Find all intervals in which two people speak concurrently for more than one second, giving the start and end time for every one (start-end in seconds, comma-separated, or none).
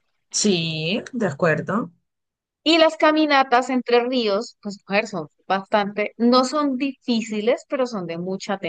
none